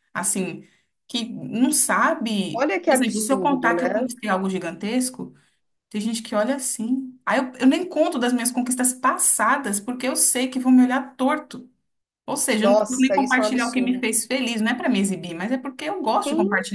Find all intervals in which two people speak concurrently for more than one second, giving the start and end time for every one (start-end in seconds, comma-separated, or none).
2.5-3.8, 12.6-14.0